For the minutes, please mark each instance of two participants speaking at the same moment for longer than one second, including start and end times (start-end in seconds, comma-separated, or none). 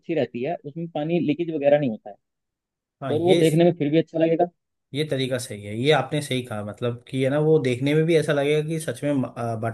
none